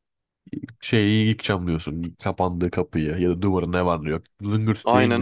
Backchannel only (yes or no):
no